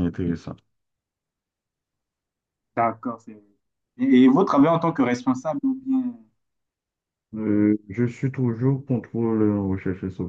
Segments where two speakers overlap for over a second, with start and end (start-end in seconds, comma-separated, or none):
none